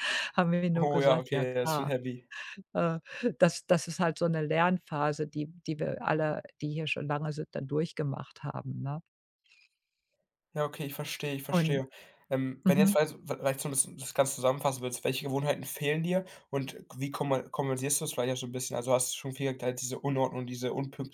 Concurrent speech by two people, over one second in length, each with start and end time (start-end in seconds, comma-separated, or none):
0.7-1.9